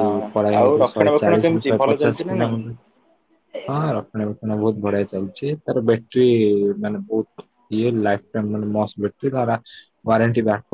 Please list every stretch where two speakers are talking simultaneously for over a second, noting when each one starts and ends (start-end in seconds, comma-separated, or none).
0.6-2.5